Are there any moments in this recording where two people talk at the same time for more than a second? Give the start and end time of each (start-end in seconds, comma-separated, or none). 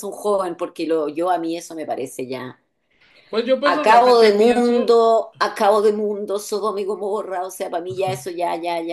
3.7-5.0